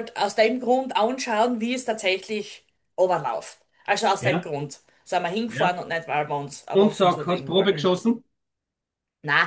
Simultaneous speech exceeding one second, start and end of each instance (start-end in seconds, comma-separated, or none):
6.7-8.0